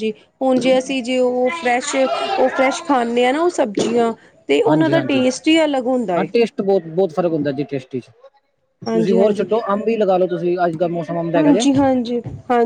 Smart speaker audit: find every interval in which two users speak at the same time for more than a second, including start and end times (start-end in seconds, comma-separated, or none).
none